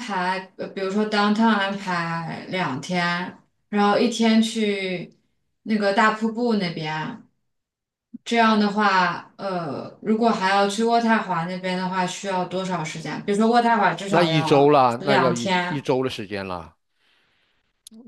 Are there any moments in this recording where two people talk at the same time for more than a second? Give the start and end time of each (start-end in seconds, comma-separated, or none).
14.1-15.8